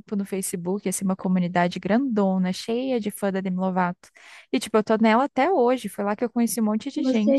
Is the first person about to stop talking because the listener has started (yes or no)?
yes